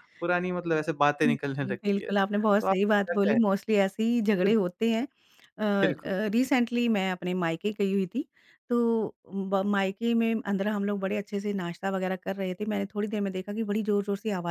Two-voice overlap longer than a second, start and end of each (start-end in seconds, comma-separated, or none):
1.2-3.4